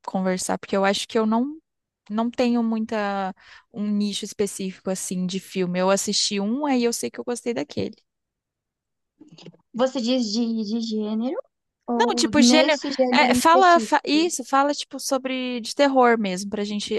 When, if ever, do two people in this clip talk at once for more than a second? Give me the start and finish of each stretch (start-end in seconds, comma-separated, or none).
12.0-14.2